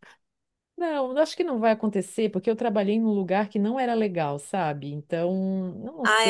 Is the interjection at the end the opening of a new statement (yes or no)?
yes